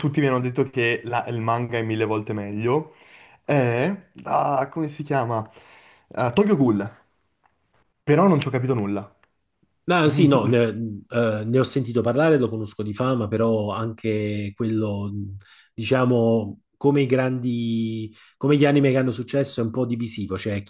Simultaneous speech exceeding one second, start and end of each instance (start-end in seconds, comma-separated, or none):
none